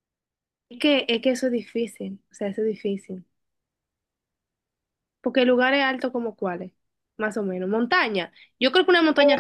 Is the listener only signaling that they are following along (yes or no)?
no